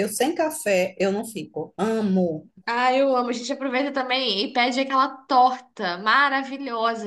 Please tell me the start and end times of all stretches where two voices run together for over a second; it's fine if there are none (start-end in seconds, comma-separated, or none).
none